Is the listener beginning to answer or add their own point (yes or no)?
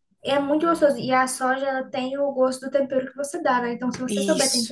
no